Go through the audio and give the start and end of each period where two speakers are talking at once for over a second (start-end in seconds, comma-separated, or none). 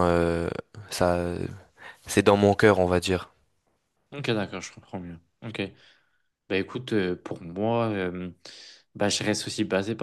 none